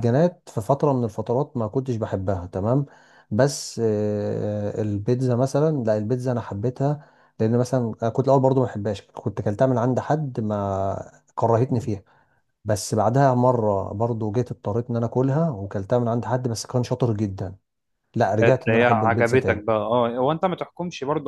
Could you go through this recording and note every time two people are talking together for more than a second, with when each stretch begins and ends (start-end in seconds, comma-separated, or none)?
18.4-19.6